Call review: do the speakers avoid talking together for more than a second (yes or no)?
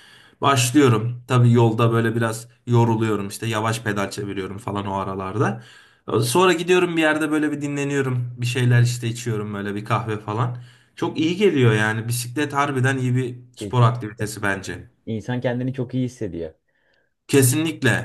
no